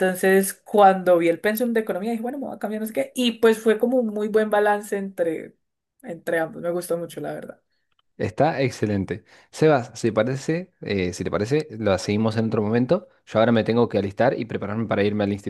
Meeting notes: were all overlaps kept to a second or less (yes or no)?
yes